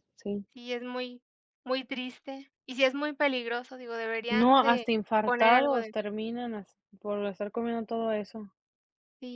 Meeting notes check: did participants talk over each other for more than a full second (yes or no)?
yes